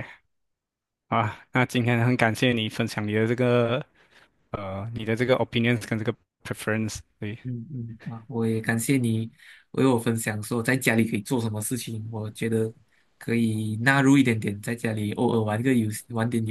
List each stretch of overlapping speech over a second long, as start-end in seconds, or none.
none